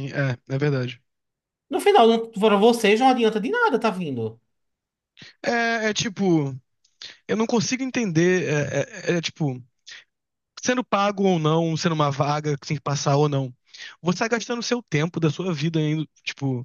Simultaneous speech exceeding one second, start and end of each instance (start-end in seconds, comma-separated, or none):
none